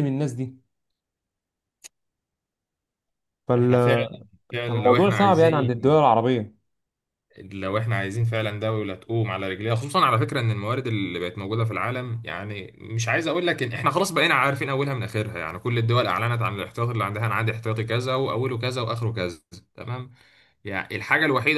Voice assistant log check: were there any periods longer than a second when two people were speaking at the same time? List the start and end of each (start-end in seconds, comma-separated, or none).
4.7-6.0